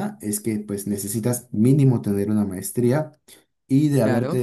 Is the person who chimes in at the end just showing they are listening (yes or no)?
yes